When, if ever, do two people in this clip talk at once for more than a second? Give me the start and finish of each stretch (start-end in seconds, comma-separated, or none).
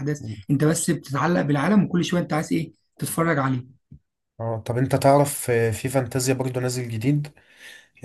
none